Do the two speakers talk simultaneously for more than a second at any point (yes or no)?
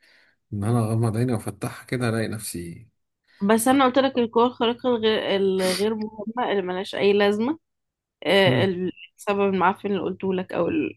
no